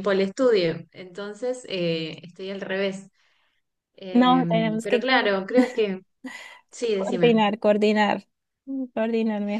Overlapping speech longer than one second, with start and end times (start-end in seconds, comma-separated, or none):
4.1-5.4